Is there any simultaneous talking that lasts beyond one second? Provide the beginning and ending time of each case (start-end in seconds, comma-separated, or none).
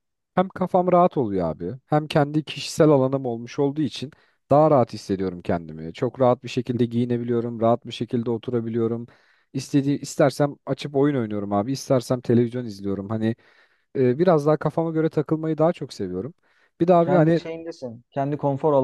none